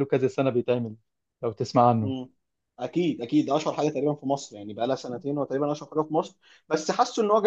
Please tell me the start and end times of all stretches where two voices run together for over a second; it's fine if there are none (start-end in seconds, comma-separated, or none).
none